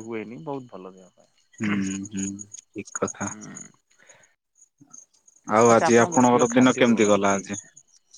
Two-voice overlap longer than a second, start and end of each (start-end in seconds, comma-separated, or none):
5.7-7.4